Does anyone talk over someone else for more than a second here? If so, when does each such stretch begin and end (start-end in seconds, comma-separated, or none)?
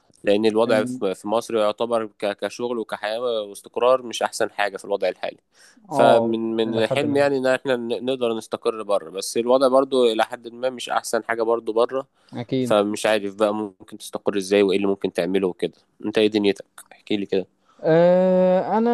5.9-7.3